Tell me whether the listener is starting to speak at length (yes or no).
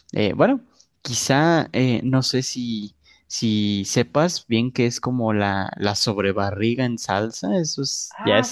yes